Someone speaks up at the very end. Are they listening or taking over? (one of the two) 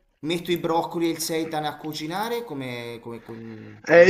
taking over